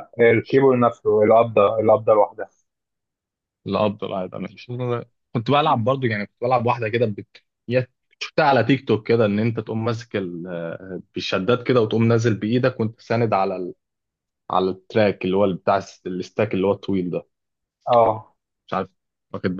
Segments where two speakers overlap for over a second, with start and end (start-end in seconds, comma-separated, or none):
none